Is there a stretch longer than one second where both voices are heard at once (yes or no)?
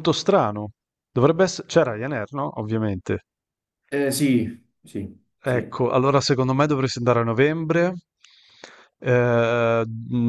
no